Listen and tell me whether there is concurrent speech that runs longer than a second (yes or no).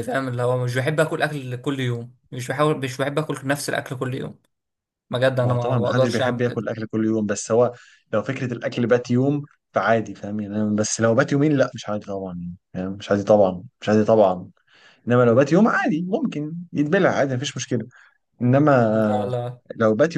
yes